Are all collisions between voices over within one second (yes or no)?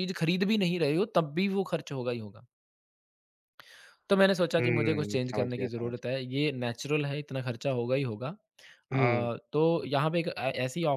no